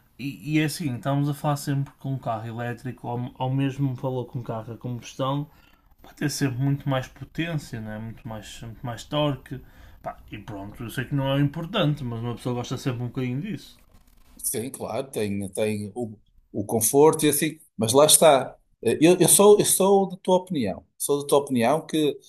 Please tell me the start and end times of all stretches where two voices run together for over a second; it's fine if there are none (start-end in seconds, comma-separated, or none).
none